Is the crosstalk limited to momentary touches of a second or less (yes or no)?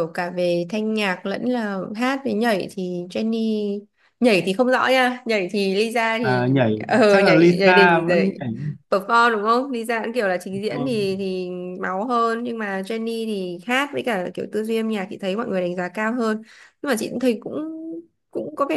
no